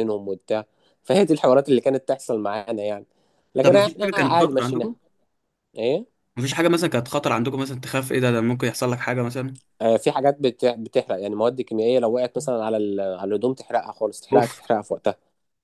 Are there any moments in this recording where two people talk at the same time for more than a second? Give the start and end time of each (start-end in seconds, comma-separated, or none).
3.6-4.9